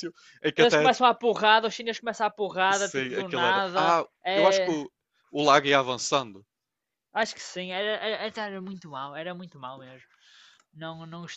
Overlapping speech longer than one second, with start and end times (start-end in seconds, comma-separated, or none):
2.7-4.7